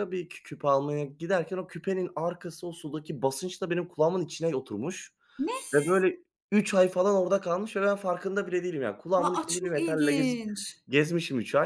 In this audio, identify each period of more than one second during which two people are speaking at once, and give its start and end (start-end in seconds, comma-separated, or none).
9.2-10.4